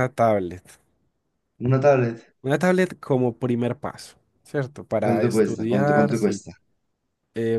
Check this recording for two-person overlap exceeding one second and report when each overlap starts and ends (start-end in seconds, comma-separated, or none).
5.0-6.4